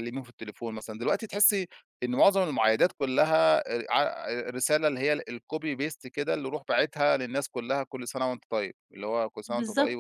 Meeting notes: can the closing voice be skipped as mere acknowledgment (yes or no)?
no